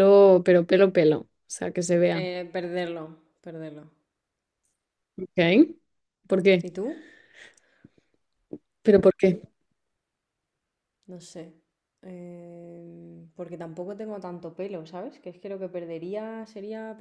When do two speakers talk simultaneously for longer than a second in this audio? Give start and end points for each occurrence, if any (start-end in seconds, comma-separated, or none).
none